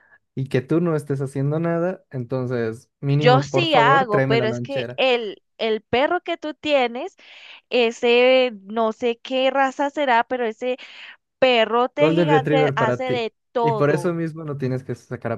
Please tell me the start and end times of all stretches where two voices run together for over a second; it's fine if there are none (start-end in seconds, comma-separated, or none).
3.1-5.0, 12.0-14.1